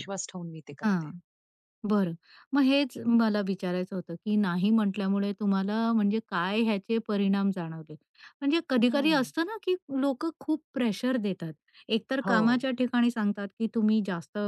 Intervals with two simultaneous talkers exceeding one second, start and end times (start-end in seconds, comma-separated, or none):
none